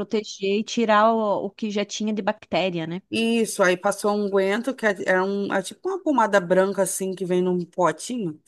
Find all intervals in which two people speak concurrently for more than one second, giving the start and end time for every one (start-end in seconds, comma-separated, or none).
none